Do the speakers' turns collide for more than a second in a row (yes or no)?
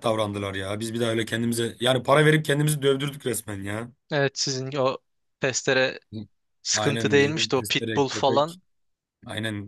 yes